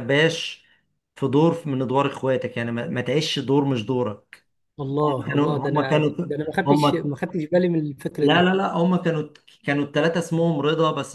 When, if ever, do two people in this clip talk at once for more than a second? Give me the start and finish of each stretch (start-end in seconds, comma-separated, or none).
5.1-7.1